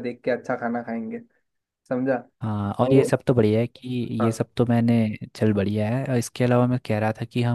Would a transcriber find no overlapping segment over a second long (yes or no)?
yes